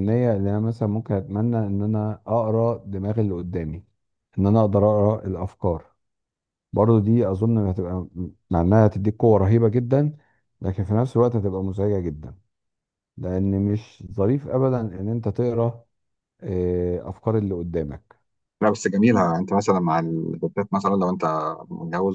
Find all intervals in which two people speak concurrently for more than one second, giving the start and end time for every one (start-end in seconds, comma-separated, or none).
none